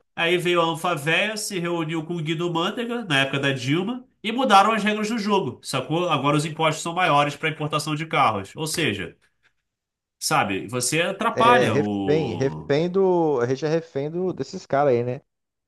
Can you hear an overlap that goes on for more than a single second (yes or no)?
yes